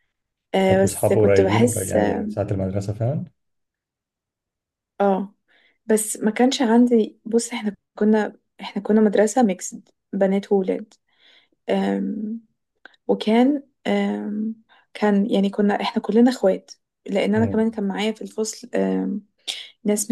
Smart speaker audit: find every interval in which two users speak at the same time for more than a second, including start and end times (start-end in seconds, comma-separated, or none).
0.7-2.3